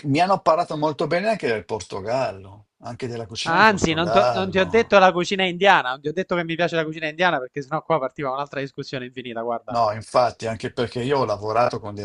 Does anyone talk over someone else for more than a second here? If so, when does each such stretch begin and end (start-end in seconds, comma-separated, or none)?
3.5-5.0